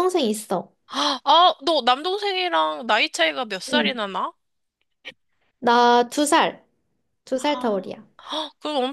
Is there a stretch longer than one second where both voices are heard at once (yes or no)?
no